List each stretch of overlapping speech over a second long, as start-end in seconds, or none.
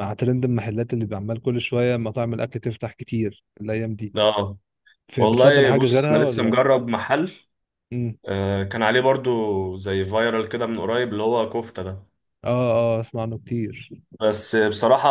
5.2-6.6